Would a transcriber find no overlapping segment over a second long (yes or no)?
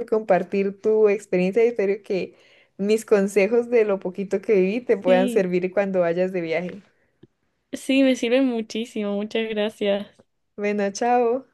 yes